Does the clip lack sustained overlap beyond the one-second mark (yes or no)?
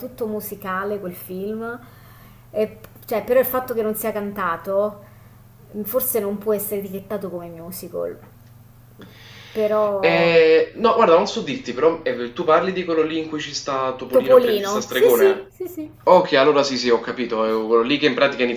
no